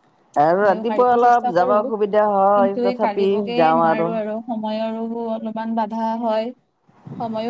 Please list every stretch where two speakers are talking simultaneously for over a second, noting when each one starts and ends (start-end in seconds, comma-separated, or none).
0.6-3.8